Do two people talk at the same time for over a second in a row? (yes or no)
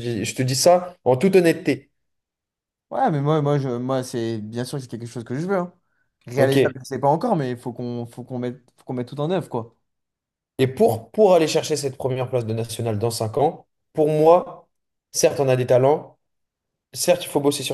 no